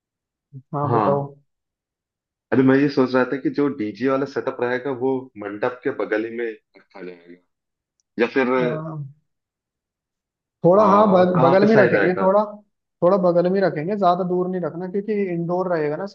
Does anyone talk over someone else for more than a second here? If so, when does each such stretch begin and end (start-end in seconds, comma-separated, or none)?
10.8-12.3